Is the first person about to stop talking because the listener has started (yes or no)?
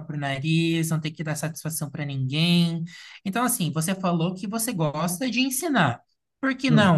no